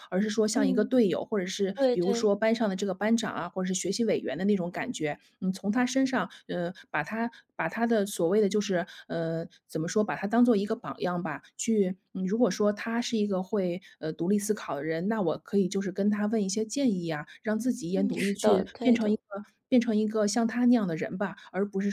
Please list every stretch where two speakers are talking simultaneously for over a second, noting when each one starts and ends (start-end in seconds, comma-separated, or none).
17.9-19.2